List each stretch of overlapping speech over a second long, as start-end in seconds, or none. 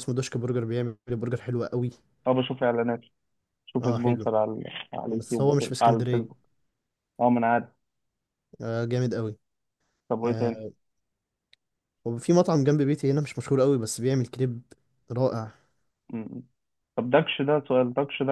5.1-6.4